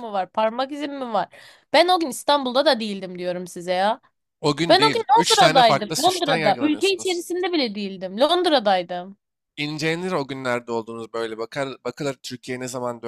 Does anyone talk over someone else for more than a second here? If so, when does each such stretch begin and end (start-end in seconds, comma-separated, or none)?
4.7-7.2